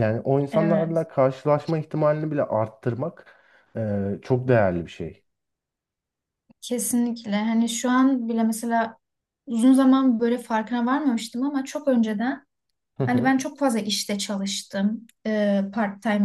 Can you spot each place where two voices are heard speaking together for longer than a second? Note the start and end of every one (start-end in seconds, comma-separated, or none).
none